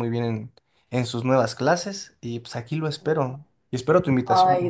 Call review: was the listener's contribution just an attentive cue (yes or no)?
no